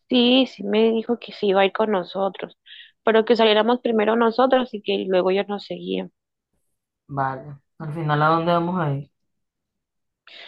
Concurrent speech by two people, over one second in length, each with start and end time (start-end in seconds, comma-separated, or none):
none